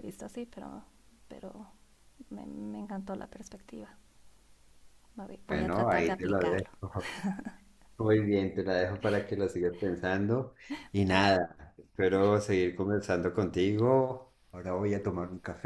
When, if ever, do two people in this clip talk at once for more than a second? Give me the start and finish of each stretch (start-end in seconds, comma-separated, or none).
5.5-6.7